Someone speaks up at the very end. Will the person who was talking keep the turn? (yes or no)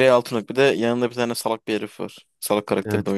no